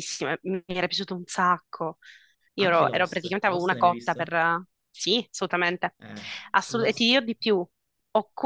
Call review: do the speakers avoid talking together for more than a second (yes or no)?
no